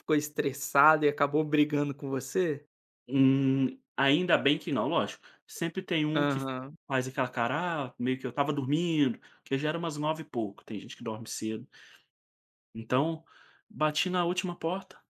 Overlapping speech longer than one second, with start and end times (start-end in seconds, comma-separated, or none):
none